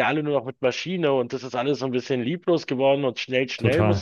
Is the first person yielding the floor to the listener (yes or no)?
yes